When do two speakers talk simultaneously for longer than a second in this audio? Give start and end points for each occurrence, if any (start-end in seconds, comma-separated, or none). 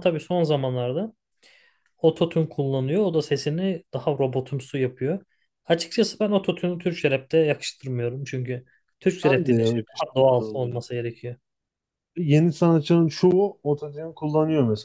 9.2-10.8